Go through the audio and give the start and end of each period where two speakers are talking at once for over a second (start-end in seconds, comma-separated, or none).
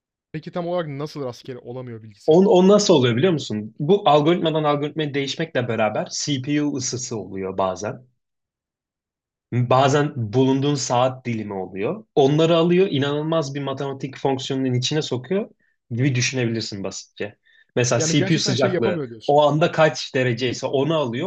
18.0-19.4